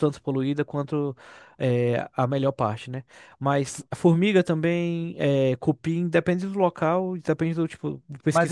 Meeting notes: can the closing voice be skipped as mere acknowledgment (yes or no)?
no